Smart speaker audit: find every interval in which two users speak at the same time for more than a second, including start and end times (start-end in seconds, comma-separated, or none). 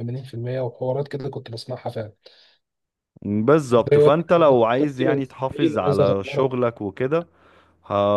3.9-6.5